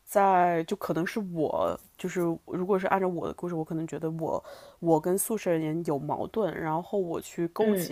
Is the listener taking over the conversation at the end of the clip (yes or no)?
no